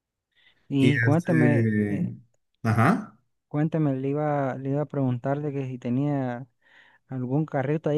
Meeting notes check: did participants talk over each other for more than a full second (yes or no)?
yes